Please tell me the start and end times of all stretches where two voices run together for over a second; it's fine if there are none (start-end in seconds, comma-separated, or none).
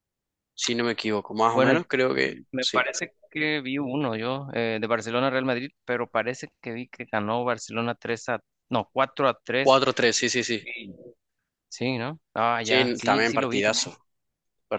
12.6-13.9